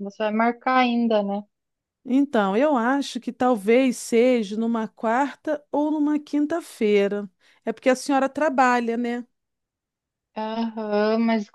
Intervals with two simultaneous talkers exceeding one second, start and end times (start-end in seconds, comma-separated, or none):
none